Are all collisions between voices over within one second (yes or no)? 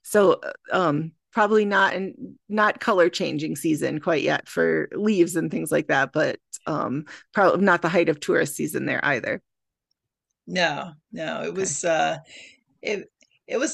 yes